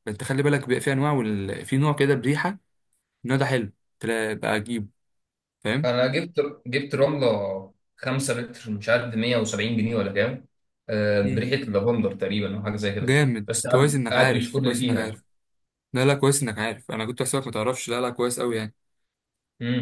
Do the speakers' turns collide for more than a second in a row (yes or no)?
yes